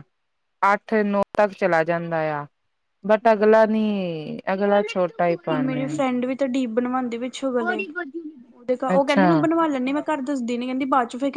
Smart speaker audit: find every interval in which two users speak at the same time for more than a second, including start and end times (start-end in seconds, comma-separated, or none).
none